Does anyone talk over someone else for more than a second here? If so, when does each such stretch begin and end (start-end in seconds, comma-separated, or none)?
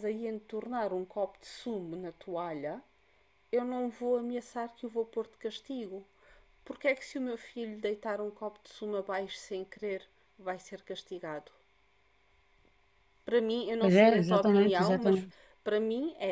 13.8-15.2